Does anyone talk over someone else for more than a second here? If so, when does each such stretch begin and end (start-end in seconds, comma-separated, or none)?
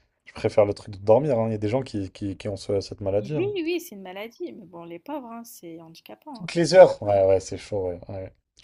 none